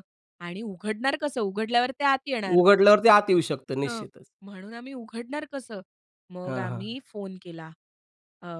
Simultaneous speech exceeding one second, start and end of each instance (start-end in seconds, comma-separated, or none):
none